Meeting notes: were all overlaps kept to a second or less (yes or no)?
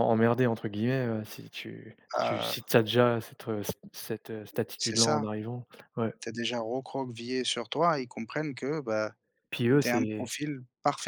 yes